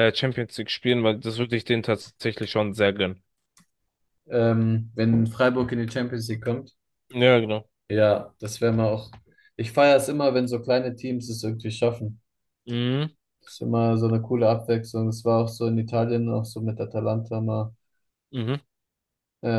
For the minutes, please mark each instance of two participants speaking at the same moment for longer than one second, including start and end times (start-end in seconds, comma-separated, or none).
none